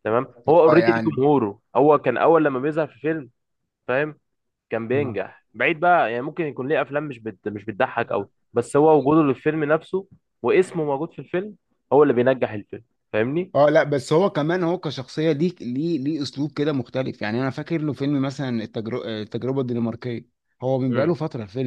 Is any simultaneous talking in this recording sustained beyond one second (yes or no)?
no